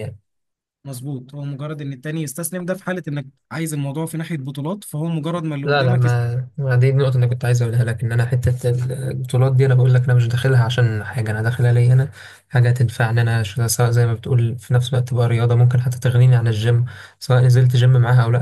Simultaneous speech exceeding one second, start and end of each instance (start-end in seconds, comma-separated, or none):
none